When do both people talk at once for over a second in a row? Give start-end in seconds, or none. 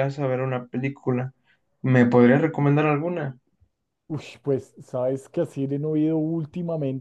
none